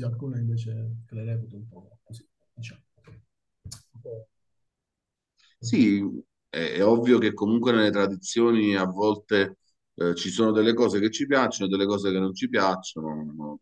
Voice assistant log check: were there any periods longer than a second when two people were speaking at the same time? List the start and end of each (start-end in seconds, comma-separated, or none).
none